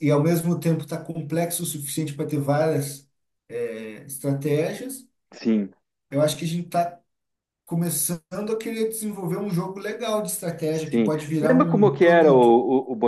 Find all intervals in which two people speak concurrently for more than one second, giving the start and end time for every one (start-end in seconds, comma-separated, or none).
10.7-12.4